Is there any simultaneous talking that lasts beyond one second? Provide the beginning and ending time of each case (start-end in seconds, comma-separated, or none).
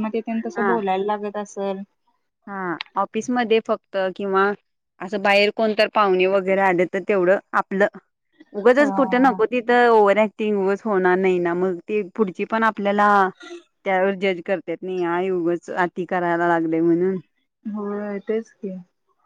none